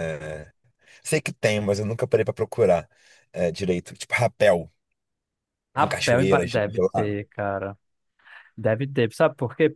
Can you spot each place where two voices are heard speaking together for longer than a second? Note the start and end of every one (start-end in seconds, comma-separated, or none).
5.8-7.2